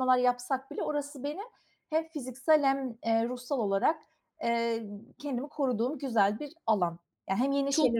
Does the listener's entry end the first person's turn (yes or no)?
yes